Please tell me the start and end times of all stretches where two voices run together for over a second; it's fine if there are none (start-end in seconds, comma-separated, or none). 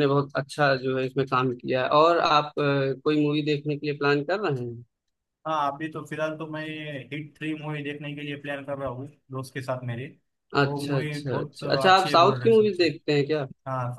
10.7-12.8